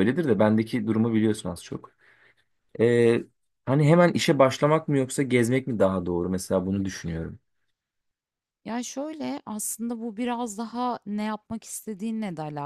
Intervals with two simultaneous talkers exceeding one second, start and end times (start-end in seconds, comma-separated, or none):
none